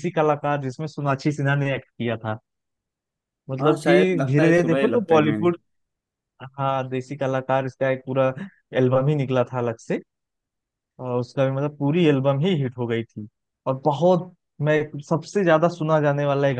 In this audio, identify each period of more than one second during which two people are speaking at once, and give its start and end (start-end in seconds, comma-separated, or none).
3.6-5.5